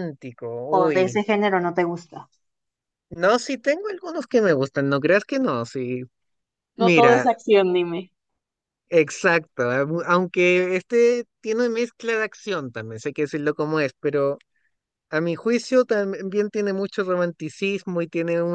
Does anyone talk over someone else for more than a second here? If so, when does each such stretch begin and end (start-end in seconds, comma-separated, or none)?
none